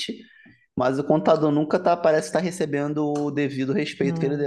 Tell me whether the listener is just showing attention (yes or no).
yes